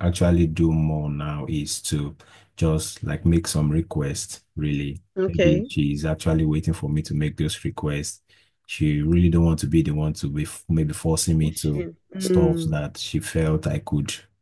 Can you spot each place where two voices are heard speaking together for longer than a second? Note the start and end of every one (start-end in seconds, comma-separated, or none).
11.4-12.8